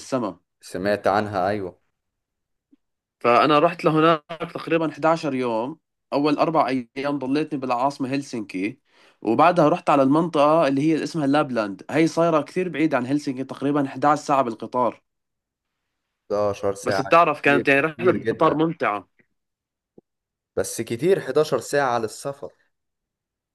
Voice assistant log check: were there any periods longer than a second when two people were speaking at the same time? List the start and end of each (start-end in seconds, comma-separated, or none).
16.8-18.6